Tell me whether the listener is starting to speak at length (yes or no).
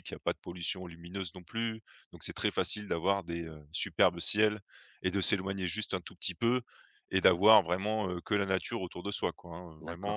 yes